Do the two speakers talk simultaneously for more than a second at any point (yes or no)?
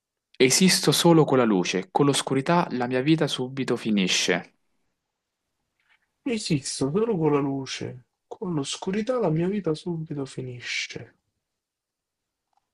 no